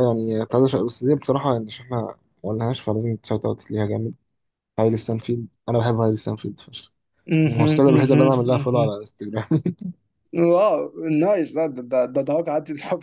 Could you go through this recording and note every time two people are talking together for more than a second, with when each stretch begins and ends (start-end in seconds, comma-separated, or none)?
7.5-8.9